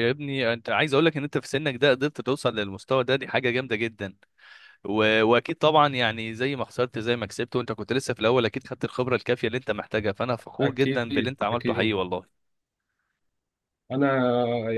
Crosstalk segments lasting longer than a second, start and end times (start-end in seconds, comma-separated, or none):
10.6-12.0